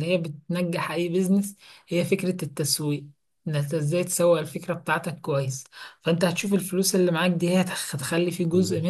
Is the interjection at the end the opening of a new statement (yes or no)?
no